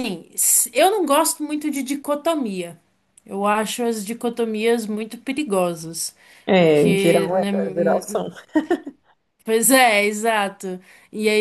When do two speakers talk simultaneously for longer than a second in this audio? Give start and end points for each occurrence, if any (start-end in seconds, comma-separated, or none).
6.6-8.2